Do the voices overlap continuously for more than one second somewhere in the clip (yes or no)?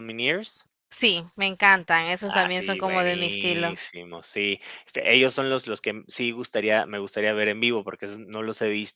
yes